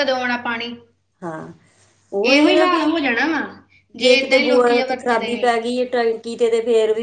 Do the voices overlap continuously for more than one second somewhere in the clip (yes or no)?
yes